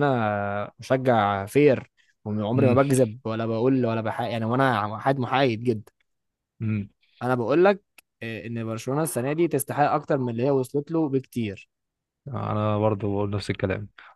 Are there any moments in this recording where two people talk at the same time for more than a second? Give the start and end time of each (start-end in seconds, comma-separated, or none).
none